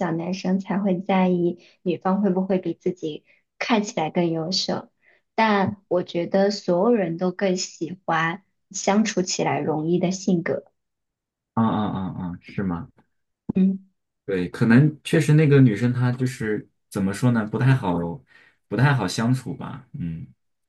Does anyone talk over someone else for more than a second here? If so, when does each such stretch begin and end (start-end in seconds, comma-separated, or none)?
none